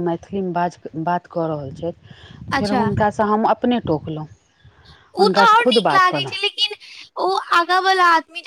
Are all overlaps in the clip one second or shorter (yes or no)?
yes